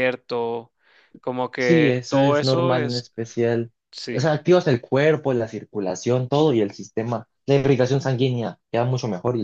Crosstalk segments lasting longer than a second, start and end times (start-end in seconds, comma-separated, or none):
1.6-3.1